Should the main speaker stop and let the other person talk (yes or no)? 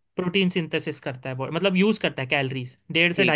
no